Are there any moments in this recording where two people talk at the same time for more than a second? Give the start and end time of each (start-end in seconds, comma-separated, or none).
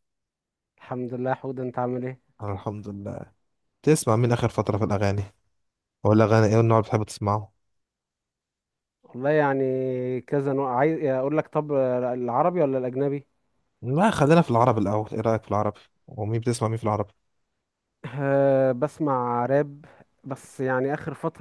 none